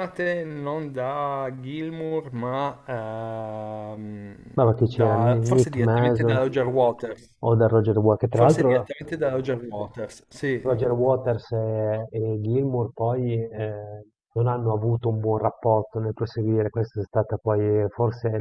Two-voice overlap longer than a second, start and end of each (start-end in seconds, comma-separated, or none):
4.8-6.4